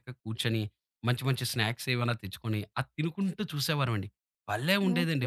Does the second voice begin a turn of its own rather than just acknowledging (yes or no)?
yes